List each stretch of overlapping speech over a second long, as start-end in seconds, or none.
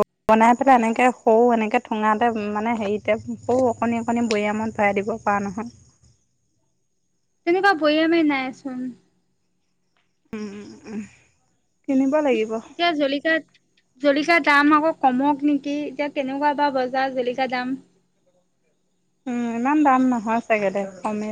none